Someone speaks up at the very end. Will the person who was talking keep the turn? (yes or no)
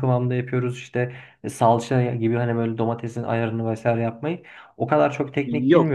no